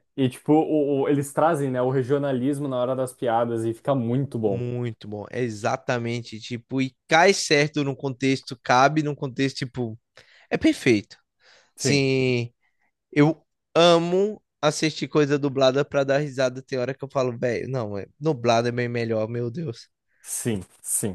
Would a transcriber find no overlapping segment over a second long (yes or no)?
yes